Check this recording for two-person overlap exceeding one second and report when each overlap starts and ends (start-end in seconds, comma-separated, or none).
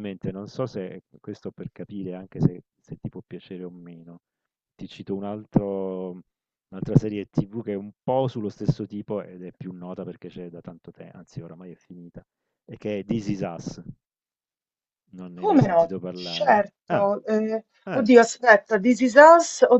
15.4-17.1